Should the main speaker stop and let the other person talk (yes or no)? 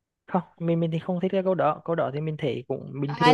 yes